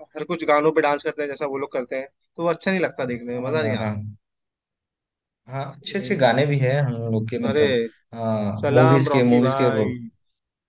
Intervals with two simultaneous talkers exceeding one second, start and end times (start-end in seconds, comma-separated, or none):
8.7-9.9